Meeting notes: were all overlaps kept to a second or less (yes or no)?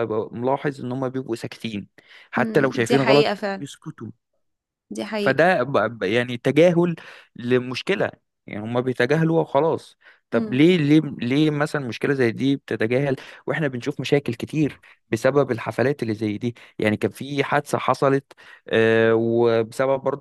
no